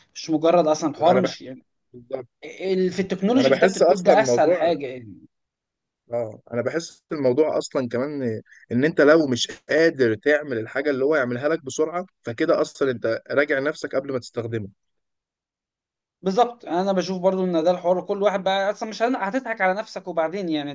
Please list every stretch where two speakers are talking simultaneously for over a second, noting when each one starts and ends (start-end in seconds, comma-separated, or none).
3.4-4.6